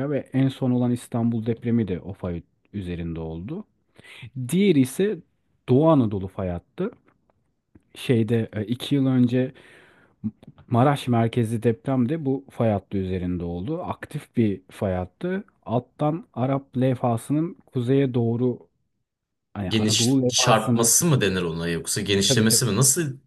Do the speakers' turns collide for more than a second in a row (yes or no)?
yes